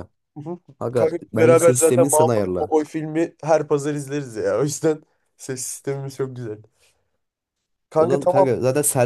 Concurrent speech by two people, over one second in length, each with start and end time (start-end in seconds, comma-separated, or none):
0.9-2.7